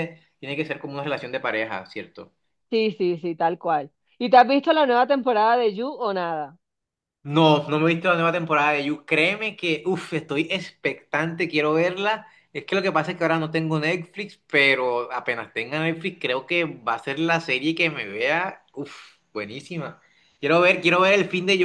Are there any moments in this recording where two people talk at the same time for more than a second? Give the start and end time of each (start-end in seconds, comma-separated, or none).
none